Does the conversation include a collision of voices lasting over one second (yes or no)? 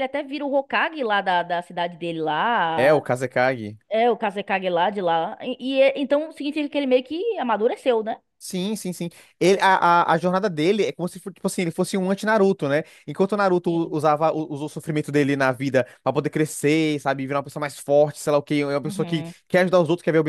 no